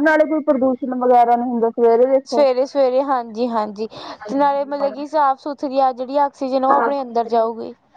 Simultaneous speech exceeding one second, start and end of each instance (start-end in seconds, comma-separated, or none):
none